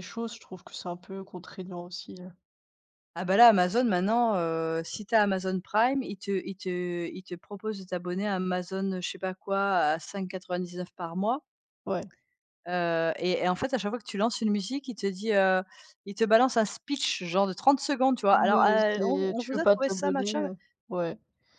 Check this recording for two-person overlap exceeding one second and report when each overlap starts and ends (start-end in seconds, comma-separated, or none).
18.3-20.4